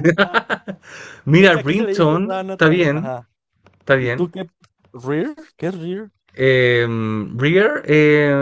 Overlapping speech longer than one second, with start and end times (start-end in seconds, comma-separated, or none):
1.4-3.1